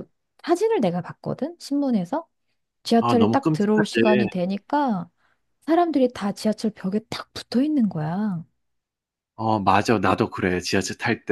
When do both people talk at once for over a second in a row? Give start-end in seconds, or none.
3.0-4.3